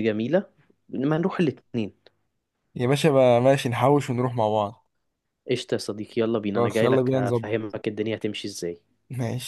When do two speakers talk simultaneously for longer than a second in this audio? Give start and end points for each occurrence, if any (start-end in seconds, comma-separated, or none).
6.5-7.8